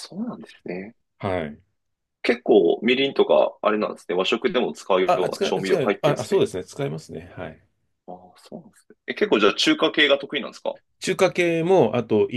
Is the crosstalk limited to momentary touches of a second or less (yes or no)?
no